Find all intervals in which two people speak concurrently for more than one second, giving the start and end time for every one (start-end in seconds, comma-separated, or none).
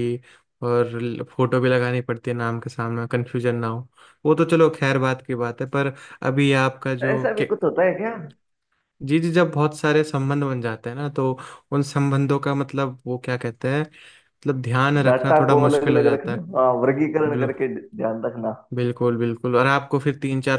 15.1-16.4